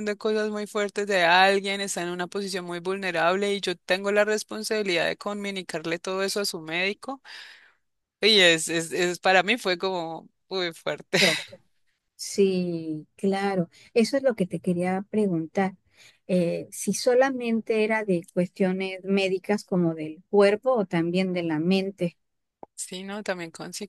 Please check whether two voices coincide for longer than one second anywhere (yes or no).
no